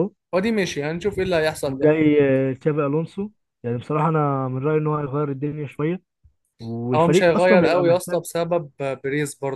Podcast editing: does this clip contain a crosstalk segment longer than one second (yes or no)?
yes